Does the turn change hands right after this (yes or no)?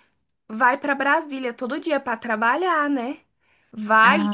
no